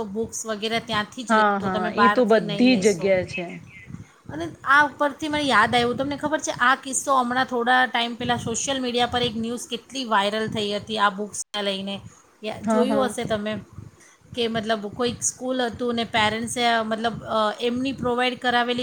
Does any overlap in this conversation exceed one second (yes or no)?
yes